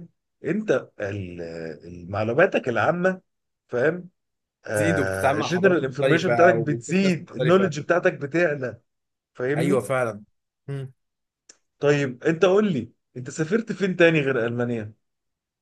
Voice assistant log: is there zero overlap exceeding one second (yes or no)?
no